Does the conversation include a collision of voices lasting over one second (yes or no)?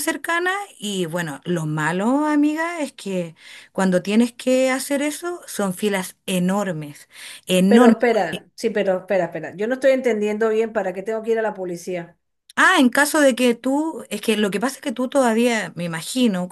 no